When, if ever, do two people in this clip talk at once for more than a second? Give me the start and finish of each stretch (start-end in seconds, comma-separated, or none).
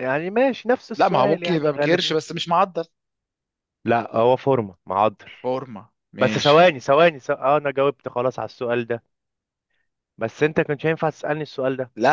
1.0-2.2